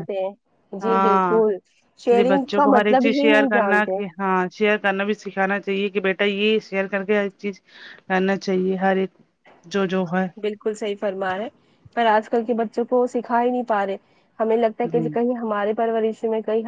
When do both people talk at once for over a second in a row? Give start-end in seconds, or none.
2.1-4.0